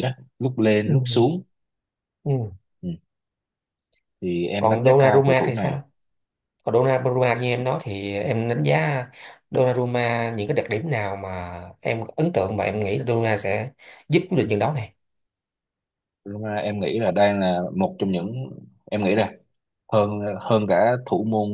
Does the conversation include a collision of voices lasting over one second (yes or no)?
yes